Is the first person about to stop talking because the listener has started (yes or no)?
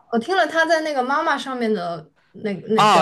yes